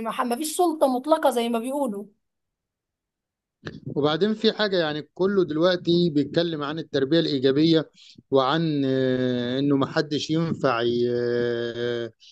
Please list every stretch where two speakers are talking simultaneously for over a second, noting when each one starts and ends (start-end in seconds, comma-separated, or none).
none